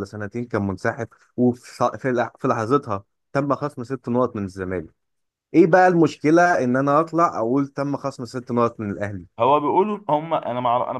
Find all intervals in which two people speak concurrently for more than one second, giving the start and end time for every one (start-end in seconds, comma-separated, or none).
none